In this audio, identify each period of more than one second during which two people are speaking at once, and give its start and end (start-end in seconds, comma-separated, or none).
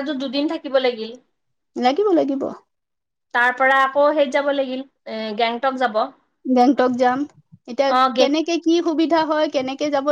none